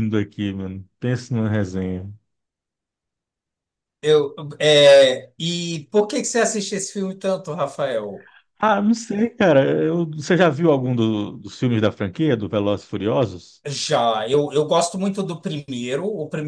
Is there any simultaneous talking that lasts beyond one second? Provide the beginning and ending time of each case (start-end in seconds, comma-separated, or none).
none